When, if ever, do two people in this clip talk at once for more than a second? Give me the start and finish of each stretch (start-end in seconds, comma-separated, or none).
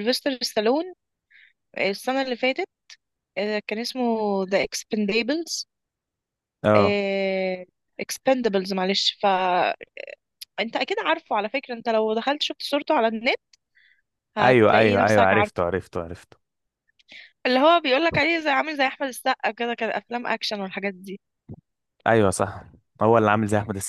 14.4-15.6